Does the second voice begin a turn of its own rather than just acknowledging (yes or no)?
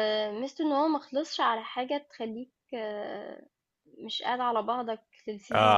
yes